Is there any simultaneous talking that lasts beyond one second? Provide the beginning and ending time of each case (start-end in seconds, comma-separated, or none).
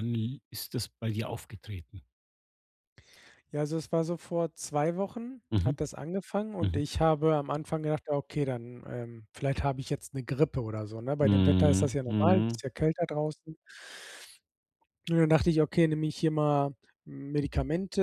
11.2-12.6